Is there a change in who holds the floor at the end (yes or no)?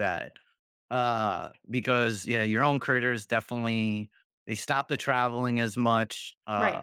no